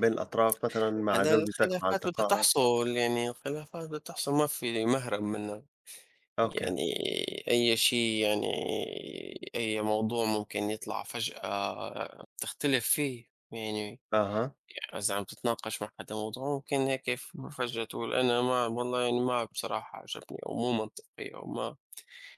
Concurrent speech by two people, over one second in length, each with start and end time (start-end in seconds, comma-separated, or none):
1.1-2.5